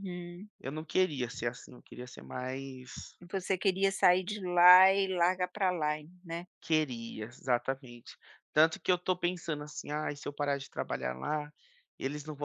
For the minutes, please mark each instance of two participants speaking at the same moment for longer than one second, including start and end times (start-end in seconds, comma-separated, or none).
none